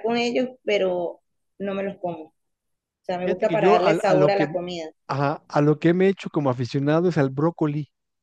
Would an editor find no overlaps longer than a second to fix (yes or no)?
no